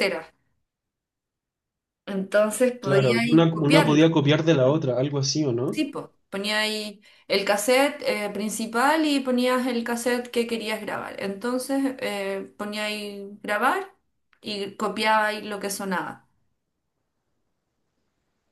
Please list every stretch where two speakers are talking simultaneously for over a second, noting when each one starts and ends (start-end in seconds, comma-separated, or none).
2.8-4.1